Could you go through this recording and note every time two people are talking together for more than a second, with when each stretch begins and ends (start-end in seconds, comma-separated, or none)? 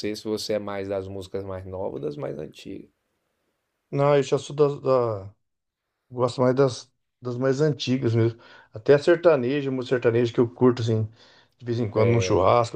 none